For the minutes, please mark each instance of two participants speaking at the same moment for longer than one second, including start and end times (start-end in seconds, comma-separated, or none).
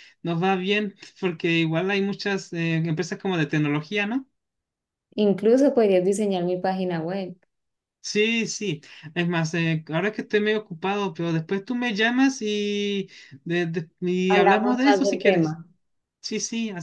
14.3-15.6